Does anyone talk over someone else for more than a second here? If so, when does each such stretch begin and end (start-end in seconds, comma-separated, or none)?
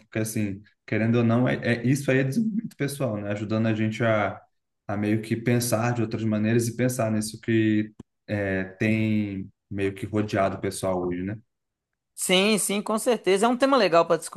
none